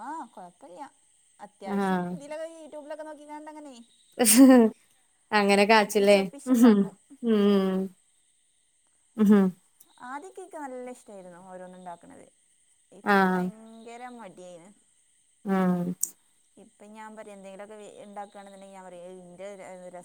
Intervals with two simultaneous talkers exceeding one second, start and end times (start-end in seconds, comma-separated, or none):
none